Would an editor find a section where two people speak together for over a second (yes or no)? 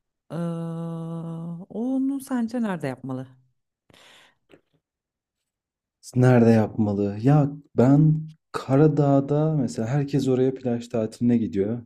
no